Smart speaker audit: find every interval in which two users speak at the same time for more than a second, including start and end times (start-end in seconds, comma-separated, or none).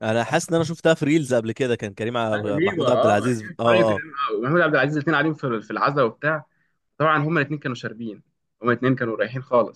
2.3-4.0